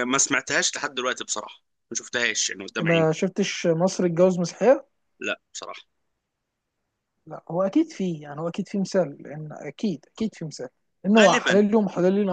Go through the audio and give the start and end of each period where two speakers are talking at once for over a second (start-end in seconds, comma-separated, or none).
none